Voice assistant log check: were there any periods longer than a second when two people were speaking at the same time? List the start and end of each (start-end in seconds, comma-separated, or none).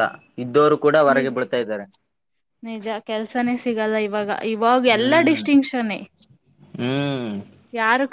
none